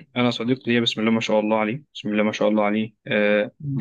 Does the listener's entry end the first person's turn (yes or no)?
no